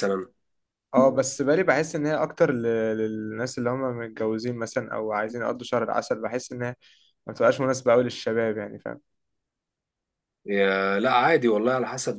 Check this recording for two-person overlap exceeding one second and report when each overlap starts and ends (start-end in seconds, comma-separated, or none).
none